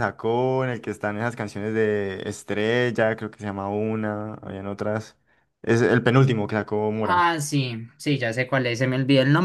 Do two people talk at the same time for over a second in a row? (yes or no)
no